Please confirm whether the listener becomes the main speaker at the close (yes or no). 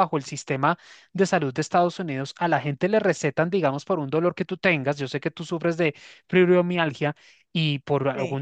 no